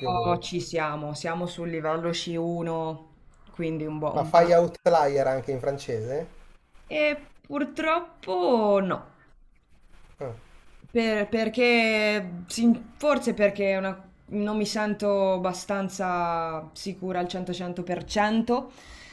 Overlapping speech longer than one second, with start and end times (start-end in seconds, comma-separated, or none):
none